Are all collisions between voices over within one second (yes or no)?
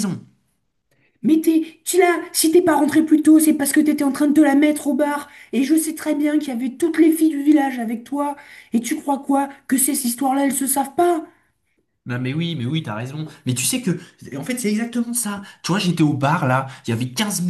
yes